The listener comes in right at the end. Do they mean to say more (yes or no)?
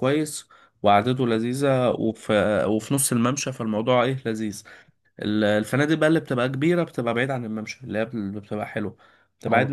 no